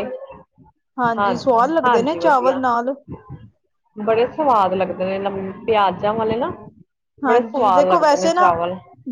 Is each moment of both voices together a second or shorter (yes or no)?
no